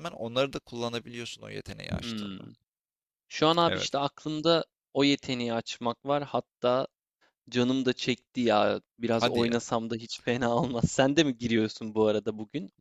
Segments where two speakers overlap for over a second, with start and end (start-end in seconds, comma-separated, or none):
none